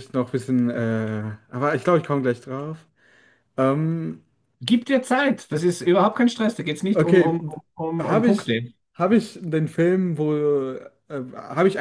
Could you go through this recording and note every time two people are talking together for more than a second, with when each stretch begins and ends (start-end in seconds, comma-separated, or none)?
none